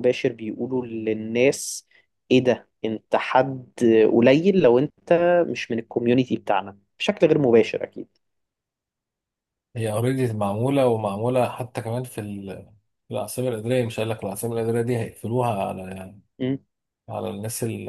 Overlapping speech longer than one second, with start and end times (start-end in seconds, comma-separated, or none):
none